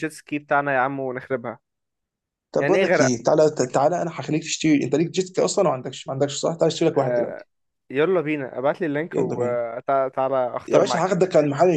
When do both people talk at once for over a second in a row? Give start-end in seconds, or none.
none